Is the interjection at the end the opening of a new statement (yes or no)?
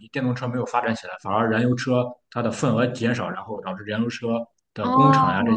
no